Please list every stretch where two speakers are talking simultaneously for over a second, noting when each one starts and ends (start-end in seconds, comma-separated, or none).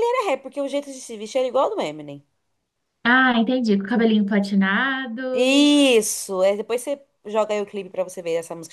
none